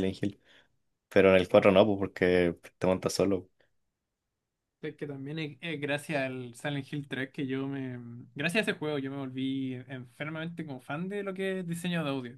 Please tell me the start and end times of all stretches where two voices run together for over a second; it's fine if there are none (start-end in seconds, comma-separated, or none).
none